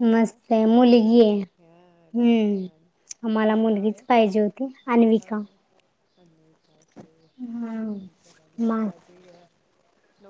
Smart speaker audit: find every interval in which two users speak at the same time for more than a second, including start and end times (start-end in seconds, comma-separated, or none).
none